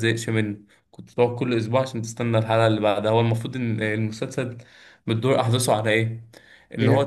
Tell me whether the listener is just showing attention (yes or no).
yes